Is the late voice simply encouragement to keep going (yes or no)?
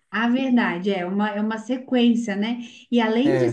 yes